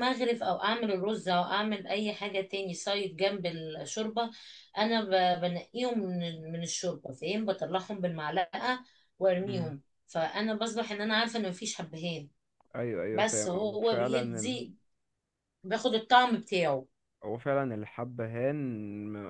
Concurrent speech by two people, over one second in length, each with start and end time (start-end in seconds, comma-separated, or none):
13.1-14.6